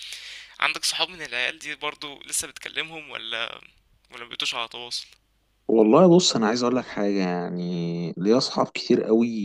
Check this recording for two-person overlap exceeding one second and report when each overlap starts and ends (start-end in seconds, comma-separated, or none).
none